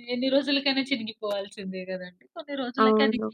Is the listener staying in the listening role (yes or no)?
yes